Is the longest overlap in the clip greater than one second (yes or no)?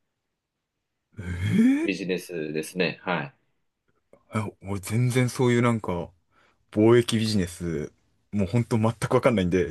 no